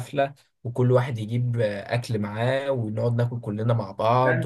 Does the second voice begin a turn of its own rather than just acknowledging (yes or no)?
yes